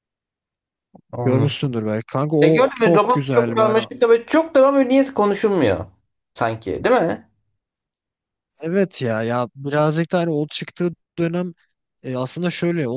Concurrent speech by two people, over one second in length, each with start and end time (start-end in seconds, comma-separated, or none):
2.4-3.8